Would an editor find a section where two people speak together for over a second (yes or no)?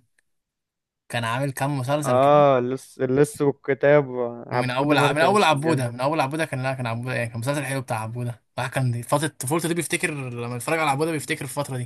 yes